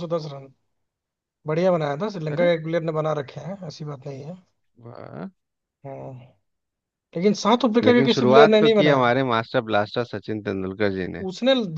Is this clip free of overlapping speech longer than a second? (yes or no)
no